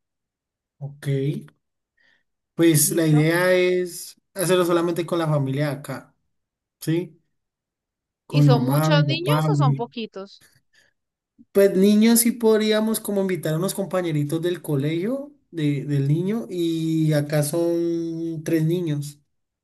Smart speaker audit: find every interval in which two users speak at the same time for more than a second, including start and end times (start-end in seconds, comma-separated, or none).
8.3-9.8